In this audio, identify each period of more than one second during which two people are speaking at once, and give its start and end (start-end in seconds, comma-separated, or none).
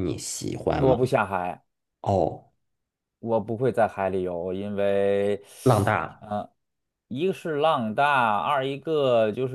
none